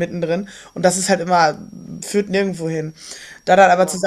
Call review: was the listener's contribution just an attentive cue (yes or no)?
yes